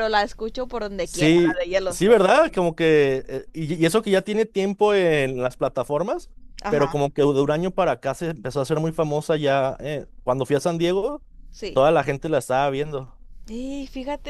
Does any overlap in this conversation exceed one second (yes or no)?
yes